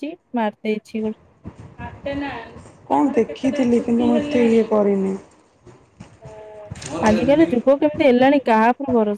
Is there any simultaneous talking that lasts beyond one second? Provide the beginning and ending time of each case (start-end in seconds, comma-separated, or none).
none